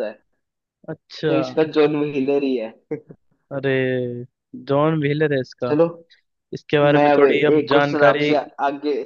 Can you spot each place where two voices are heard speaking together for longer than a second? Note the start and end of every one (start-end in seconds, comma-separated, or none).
6.9-8.3